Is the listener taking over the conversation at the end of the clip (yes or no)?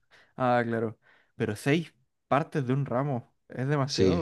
yes